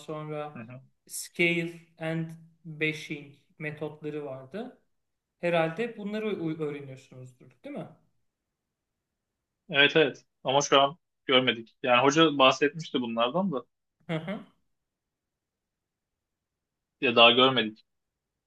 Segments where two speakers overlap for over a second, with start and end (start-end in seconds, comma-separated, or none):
none